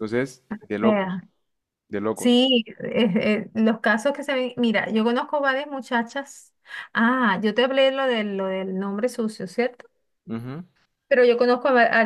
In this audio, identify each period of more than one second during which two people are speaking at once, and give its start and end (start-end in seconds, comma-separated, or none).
none